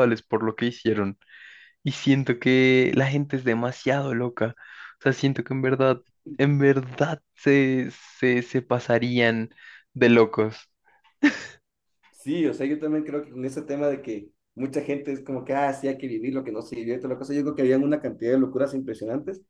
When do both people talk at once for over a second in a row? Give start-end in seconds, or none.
none